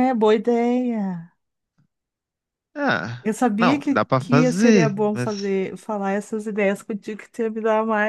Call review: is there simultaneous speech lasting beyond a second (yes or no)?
yes